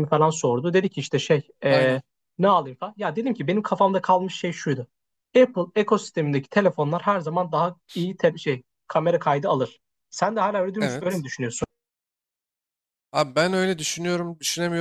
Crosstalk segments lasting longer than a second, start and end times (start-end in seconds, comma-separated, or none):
none